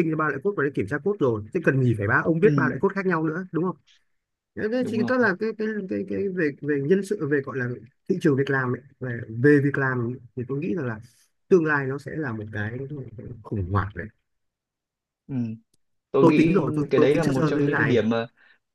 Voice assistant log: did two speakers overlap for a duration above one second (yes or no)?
yes